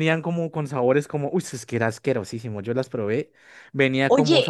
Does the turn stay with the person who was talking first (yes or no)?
no